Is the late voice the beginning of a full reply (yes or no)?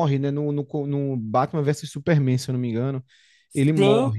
yes